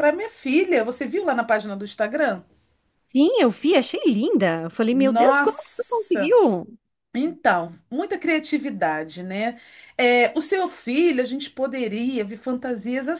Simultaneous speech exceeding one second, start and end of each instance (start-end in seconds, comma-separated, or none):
4.9-6.3